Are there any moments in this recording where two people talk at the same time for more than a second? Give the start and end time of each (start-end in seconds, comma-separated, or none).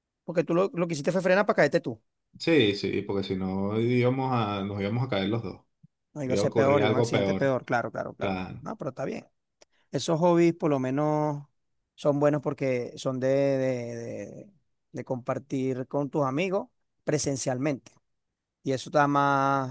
6.2-7.5